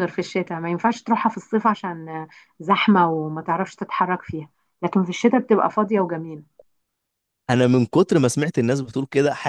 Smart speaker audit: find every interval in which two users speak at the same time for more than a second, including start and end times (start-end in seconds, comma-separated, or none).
none